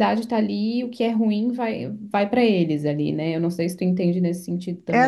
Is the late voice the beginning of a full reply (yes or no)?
yes